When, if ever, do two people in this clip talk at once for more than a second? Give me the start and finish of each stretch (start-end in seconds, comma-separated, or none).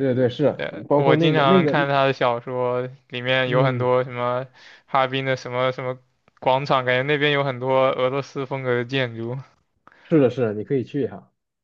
0.5-1.9